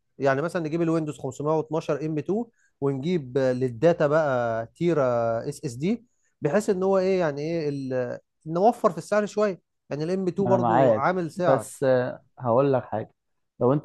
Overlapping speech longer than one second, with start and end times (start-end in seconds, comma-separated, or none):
10.5-11.8